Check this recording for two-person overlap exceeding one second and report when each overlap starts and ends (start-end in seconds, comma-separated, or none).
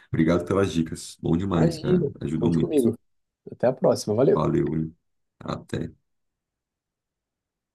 1.5-2.8